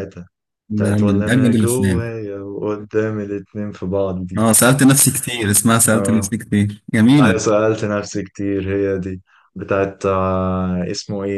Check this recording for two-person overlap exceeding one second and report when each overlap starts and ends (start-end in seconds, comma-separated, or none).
0.8-2.0